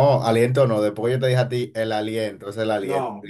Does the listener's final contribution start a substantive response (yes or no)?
no